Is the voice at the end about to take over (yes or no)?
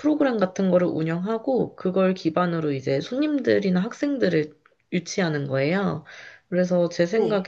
no